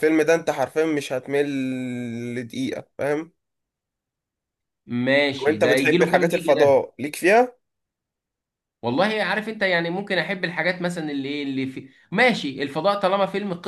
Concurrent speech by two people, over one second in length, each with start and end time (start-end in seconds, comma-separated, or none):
5.4-6.8